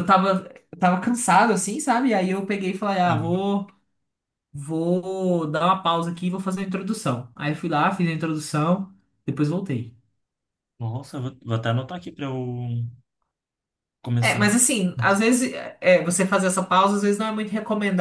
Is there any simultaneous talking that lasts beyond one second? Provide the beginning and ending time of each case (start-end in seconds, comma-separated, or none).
none